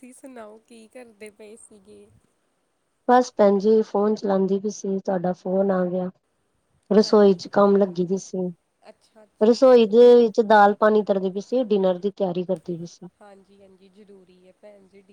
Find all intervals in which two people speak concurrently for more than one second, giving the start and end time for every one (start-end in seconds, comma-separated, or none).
8.9-10.1